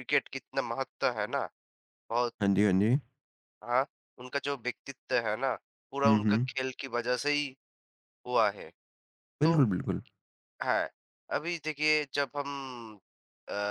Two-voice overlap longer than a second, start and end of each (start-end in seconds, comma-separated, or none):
none